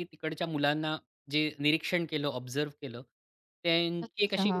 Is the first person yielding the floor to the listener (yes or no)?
no